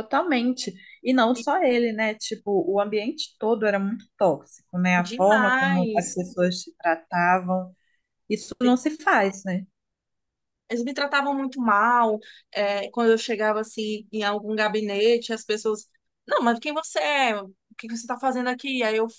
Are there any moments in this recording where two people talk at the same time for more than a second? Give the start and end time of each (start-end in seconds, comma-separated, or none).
5.0-6.2